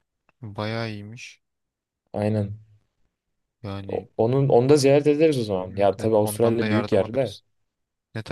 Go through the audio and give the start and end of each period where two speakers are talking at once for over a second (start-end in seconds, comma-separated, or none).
5.7-7.4